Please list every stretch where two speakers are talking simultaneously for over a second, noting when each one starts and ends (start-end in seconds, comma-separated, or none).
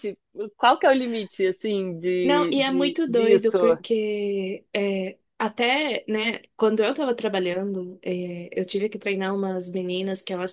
2.2-3.6